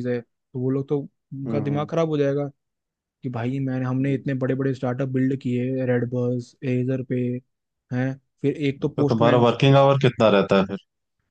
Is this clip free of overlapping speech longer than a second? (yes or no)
yes